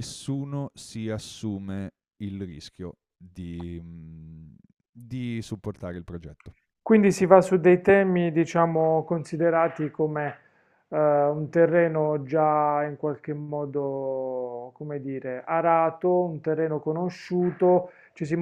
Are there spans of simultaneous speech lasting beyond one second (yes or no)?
no